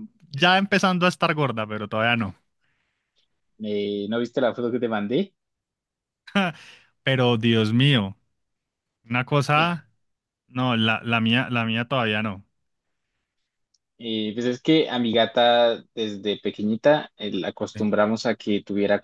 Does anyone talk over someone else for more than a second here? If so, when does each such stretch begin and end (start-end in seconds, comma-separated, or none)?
none